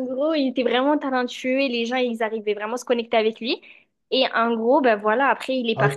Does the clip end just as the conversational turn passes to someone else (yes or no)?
yes